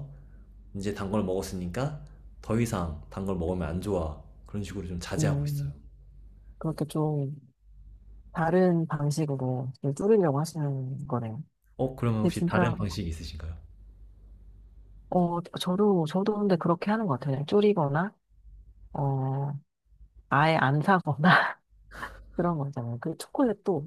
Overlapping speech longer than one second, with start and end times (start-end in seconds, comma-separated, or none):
none